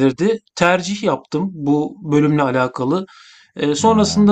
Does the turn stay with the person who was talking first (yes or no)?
yes